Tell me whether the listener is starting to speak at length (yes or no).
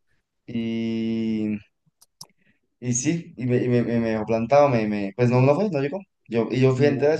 no